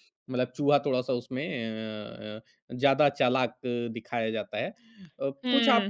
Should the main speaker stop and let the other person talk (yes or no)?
no